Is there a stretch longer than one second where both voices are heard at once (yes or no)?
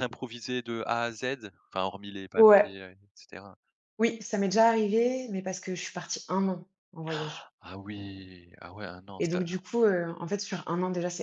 no